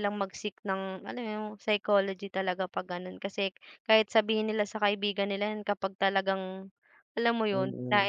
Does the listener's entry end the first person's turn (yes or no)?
yes